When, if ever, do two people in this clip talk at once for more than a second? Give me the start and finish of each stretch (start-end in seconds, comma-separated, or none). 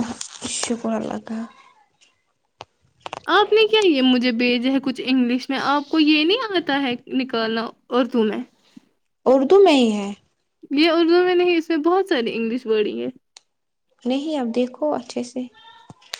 none